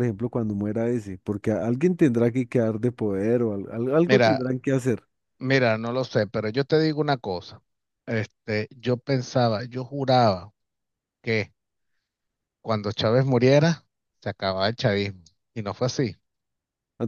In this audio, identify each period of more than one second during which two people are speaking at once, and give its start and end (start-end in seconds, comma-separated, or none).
none